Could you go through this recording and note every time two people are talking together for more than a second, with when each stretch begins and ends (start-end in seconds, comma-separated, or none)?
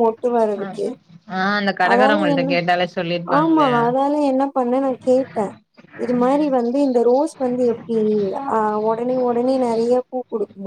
none